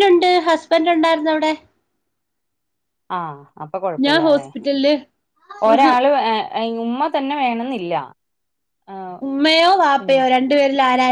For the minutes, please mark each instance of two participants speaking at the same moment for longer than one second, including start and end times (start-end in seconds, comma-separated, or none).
none